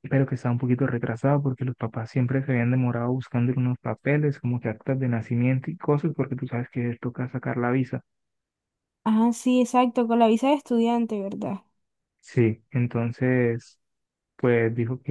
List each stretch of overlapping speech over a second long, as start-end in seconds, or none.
none